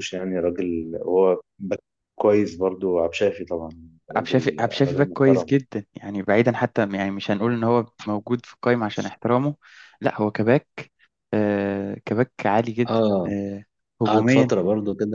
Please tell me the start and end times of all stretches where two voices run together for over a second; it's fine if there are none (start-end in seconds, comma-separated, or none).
4.2-5.5